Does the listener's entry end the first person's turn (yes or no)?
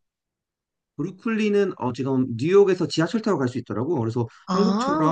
no